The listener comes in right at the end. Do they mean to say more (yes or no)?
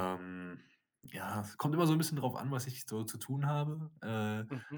no